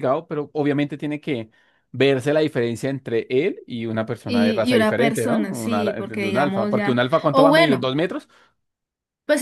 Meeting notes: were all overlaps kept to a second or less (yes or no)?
no